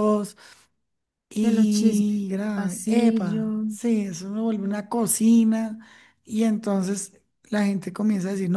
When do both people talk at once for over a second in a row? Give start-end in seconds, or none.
1.4-3.6